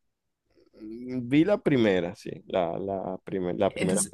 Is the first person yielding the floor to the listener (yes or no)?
yes